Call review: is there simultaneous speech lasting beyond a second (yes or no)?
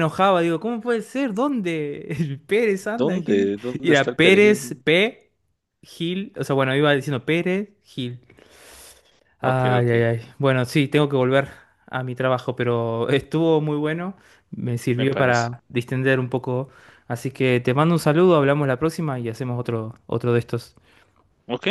yes